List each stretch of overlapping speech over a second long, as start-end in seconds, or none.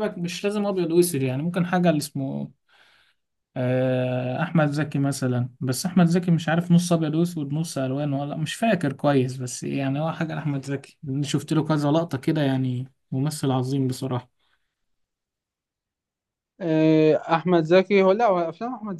none